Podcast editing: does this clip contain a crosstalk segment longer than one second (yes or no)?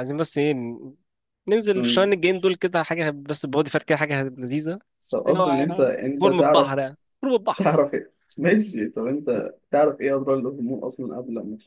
yes